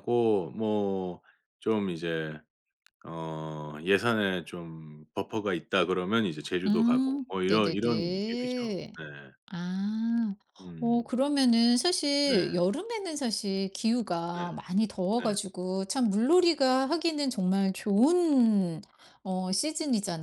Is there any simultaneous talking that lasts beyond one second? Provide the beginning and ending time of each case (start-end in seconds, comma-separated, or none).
6.7-8.9